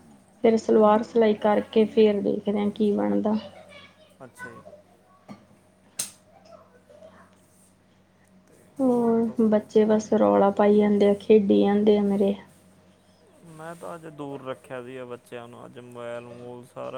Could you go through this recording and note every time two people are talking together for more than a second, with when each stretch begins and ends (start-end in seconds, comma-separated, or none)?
8.8-10.5